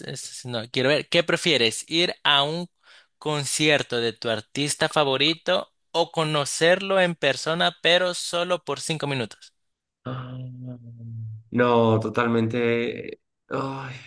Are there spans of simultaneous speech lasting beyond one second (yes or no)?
no